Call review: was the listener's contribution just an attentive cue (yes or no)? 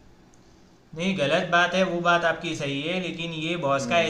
yes